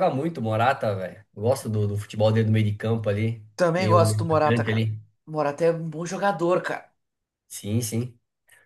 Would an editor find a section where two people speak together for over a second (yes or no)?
yes